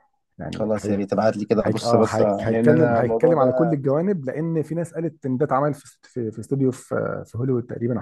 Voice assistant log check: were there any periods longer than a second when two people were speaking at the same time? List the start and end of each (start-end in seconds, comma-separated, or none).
1.6-3.8